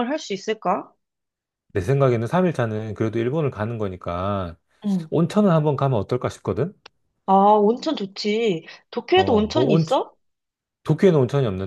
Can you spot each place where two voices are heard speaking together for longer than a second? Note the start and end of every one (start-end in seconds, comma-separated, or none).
none